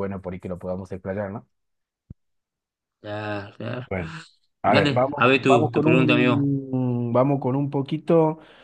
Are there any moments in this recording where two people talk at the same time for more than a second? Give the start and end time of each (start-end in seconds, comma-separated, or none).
4.6-6.5